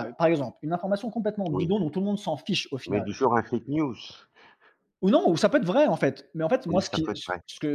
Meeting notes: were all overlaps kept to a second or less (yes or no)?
yes